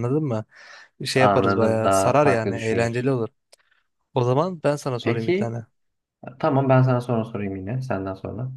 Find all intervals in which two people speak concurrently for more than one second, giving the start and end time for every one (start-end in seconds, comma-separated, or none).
1.1-3.1